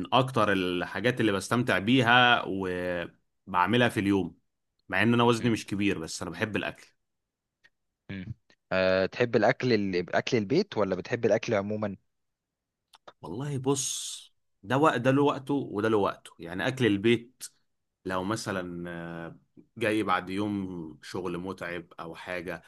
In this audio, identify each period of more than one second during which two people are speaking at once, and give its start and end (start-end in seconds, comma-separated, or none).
none